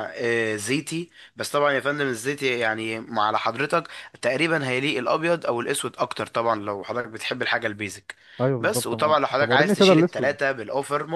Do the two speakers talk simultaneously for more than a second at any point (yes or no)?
yes